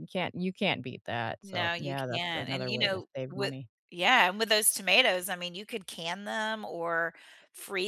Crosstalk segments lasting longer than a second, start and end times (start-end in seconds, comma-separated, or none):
1.4-3.5